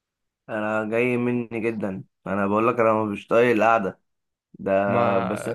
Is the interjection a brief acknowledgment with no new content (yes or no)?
yes